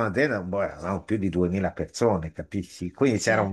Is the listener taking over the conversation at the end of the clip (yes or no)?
no